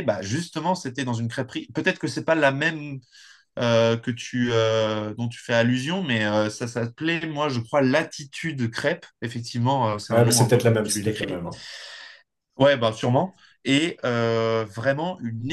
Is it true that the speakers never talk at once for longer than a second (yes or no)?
no